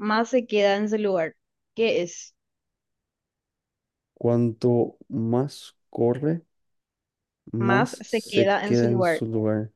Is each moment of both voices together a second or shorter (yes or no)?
no